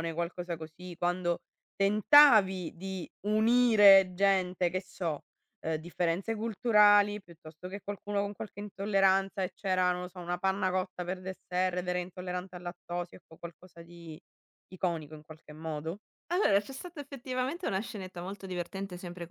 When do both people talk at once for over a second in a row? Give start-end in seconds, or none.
none